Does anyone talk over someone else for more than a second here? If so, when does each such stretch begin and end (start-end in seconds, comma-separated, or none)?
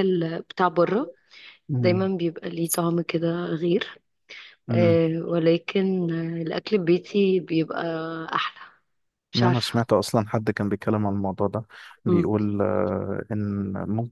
none